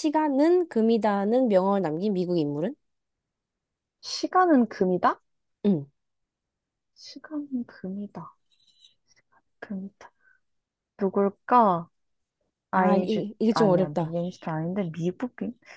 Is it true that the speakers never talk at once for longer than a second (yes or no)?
no